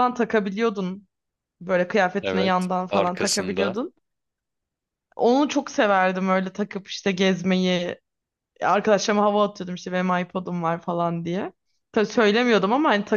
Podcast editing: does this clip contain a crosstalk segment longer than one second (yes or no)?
yes